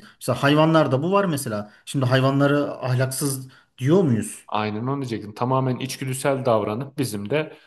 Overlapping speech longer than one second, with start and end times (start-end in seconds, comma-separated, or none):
none